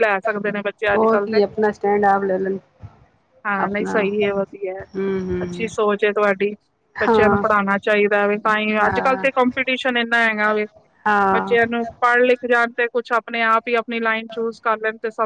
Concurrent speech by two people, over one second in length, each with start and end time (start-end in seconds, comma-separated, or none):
none